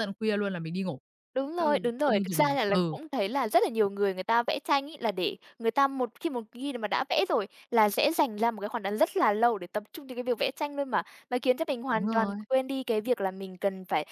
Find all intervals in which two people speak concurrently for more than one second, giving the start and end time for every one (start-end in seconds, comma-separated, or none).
1.6-3.0